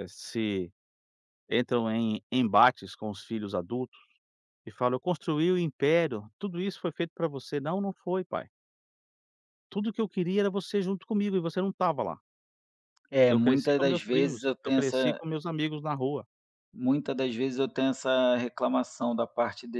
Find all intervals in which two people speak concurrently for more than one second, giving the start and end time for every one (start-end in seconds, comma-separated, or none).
13.3-15.2